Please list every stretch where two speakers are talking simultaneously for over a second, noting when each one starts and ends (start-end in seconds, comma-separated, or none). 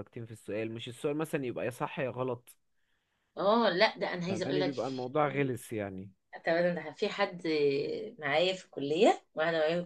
none